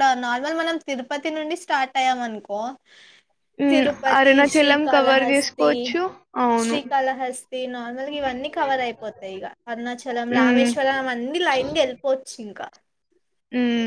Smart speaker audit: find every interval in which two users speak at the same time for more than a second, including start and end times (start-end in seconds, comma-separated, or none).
3.7-5.7